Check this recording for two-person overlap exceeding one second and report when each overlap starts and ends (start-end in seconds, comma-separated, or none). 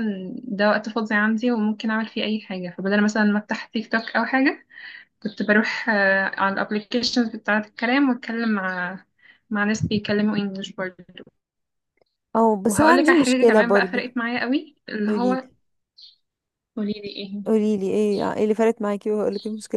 12.7-14.0